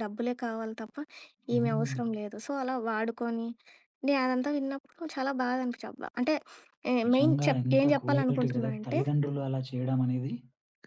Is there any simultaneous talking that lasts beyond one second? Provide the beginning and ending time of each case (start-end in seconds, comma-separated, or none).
7.1-9.0